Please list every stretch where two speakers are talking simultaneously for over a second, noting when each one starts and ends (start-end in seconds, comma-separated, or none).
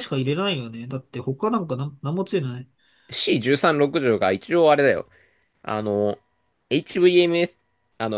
none